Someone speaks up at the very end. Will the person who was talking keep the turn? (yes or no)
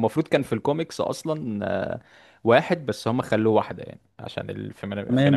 no